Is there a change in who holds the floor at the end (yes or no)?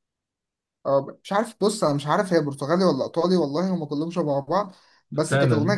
no